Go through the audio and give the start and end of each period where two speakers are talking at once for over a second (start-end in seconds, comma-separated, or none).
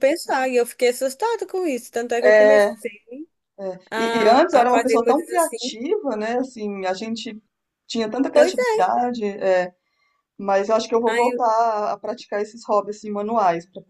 3.9-5.6